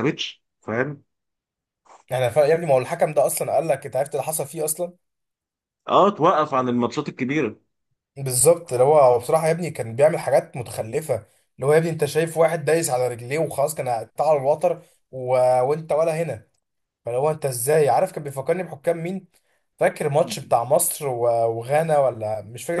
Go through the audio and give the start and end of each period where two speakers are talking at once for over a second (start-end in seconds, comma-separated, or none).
none